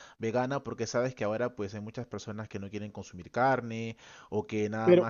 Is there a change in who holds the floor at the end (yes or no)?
yes